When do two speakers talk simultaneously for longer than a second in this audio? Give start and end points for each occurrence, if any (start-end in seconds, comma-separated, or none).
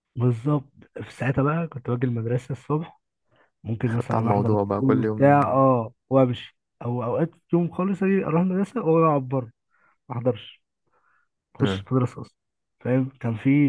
4.1-5.4